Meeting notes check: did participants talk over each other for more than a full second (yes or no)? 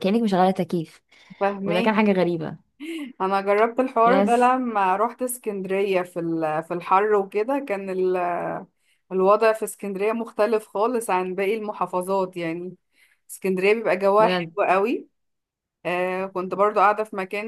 no